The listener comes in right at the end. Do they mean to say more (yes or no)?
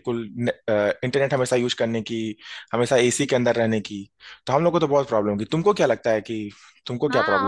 yes